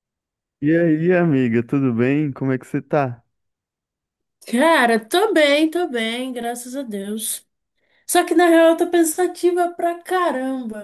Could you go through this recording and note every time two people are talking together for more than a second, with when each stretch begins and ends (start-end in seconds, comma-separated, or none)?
none